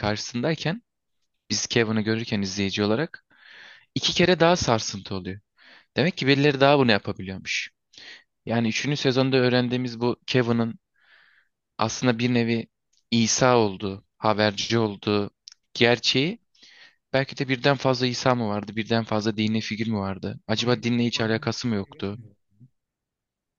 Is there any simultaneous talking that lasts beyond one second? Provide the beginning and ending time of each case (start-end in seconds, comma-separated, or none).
20.6-22.2